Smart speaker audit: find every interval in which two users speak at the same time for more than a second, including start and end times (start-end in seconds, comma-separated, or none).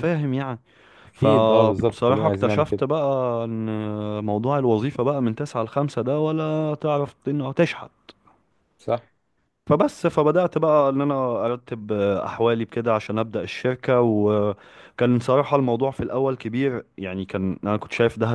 1.1-2.8